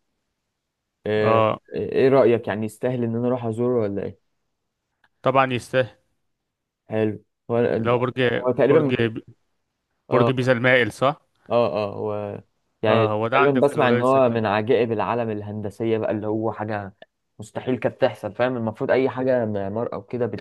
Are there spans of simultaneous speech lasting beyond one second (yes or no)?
yes